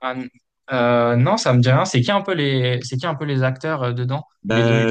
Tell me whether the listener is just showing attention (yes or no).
no